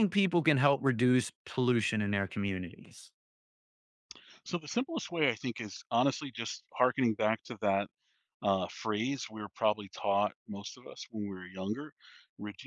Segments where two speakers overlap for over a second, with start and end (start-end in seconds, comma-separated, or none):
none